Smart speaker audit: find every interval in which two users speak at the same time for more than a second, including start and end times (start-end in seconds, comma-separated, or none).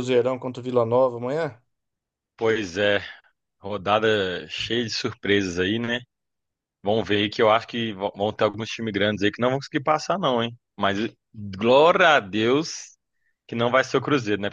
none